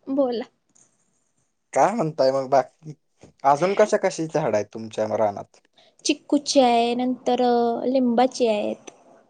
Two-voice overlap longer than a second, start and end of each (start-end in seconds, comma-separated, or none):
none